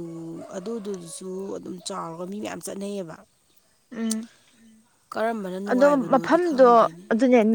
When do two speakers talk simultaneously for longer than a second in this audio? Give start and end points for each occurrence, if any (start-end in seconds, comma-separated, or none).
5.6-7.0